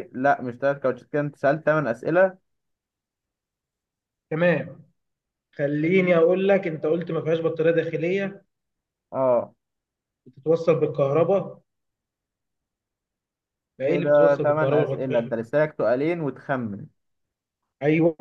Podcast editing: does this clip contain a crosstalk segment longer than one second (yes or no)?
yes